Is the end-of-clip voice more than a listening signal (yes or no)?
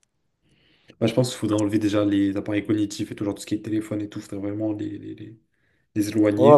yes